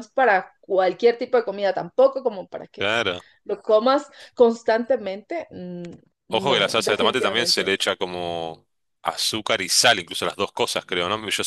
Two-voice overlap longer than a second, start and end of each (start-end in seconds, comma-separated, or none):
6.3-7.7